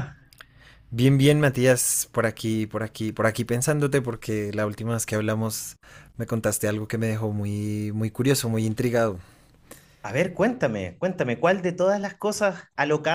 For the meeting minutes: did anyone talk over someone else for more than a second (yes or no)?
no